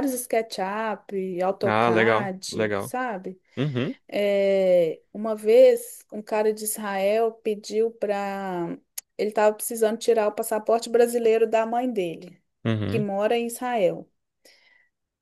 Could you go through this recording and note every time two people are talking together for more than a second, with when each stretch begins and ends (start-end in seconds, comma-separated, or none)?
1.6-2.9